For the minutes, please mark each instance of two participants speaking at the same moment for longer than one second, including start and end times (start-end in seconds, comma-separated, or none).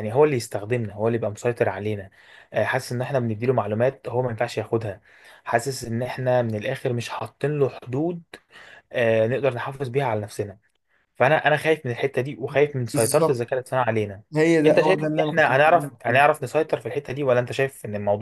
14.7-16.3